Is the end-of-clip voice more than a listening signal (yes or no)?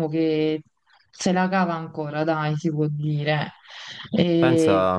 yes